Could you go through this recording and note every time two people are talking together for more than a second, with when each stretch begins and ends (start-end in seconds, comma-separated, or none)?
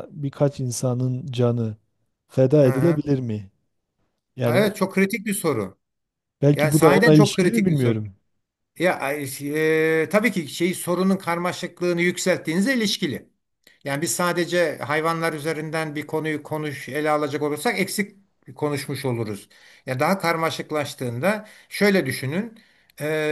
6.5-8.0